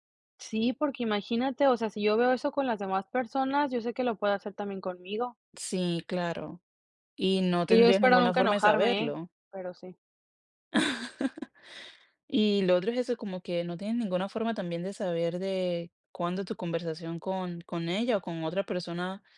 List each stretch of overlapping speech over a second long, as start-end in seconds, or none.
7.7-9.2